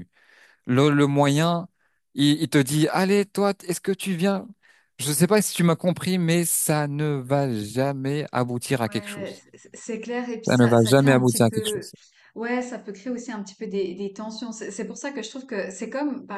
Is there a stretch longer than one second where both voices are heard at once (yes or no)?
yes